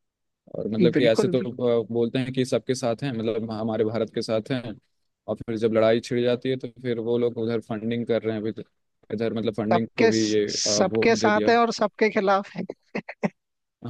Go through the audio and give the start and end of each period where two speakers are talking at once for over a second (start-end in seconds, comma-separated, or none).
9.7-11.5